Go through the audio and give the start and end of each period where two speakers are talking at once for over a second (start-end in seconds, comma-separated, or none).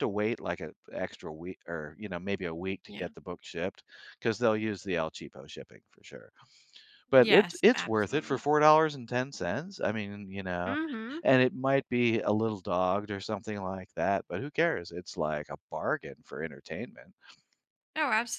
7.2-8.4